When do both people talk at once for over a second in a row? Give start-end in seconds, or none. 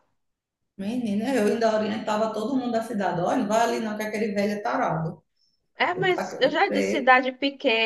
5.9-7.2